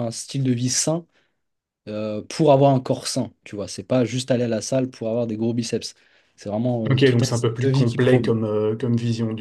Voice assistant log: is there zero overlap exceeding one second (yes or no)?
no